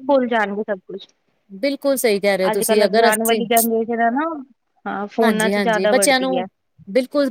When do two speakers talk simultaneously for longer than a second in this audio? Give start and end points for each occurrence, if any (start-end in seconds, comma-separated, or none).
5.2-6.5